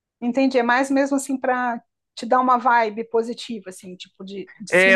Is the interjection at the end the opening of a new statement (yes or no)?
yes